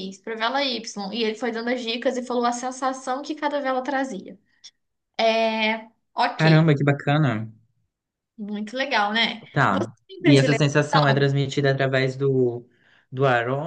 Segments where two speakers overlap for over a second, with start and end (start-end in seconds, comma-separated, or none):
9.5-11.3